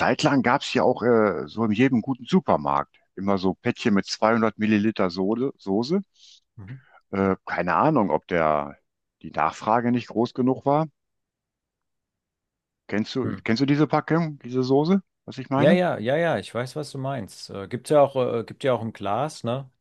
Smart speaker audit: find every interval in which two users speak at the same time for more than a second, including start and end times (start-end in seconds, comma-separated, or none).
none